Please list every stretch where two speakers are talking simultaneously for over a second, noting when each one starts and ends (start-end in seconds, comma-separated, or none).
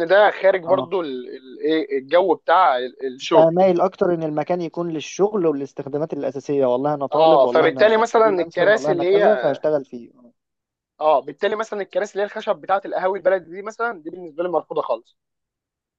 7.1-9.2